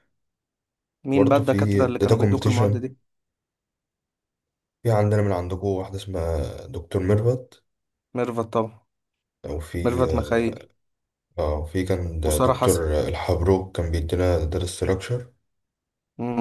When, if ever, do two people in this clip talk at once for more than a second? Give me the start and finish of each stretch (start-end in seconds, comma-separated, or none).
1.1-2.9